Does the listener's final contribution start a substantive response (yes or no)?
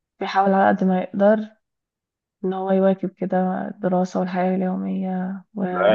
yes